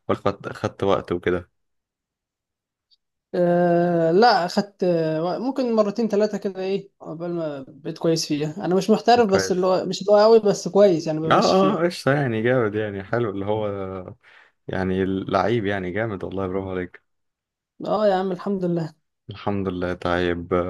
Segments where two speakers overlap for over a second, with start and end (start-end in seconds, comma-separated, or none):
none